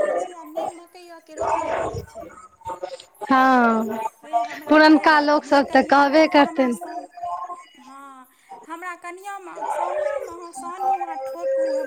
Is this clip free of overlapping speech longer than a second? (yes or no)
no